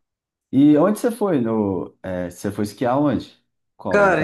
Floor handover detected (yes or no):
yes